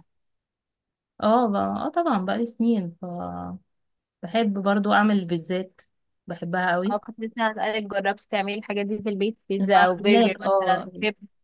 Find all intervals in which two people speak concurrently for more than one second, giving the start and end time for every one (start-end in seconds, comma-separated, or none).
9.6-10.9